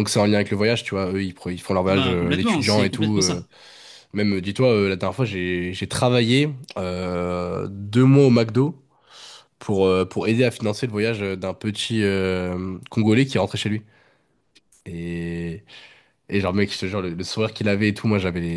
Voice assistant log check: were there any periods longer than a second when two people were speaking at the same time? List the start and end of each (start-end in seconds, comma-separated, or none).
1.9-3.4